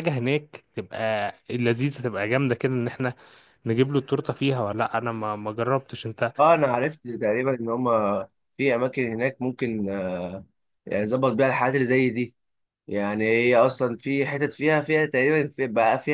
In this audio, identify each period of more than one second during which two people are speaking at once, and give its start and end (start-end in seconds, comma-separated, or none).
none